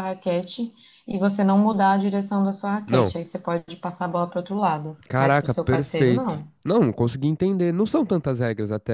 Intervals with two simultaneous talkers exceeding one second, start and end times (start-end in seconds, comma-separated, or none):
5.1-6.5